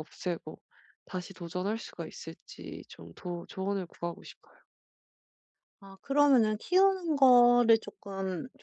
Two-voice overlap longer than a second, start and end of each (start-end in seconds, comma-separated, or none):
none